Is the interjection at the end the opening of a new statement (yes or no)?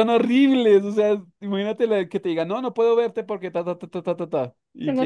no